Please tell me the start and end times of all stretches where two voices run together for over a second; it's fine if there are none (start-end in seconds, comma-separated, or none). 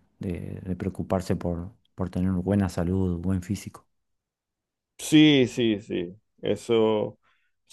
none